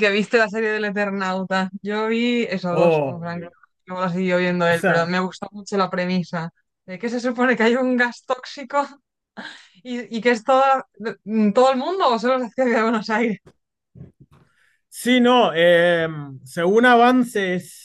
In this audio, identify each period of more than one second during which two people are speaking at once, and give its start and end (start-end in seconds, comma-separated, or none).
none